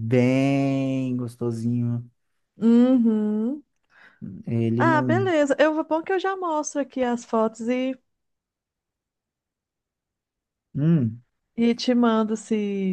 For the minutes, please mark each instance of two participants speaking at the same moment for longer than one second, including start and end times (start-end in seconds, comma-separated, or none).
none